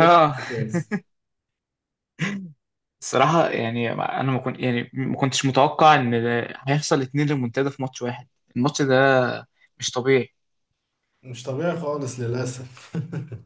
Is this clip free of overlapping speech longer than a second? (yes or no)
yes